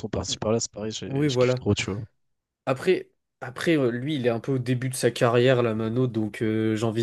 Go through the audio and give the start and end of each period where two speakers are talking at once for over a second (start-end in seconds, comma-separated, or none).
none